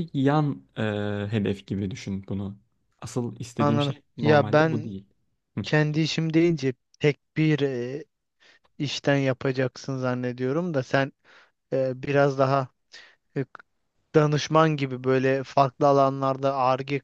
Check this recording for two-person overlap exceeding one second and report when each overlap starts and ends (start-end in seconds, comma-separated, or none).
3.6-5.0